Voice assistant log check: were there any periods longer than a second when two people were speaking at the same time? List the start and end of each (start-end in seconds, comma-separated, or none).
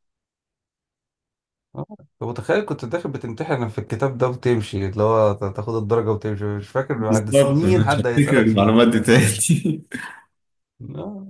7.1-8.9